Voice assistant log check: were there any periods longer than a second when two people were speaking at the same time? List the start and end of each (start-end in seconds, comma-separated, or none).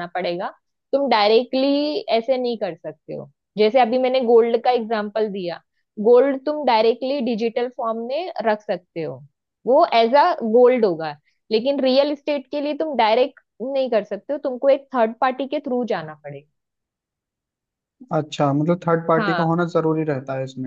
none